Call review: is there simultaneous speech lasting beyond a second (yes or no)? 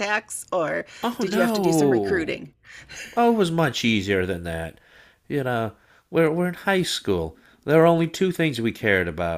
yes